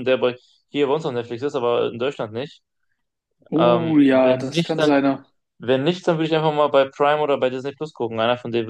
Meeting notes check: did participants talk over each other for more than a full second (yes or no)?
yes